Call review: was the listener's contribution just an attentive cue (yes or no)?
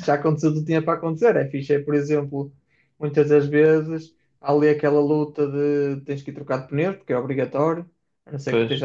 yes